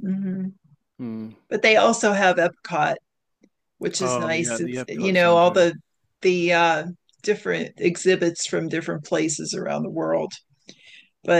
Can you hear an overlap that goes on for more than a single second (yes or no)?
yes